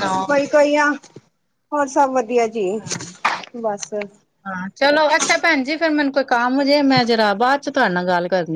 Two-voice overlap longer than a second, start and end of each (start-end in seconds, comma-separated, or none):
none